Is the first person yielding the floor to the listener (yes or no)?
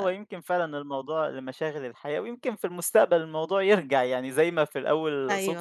no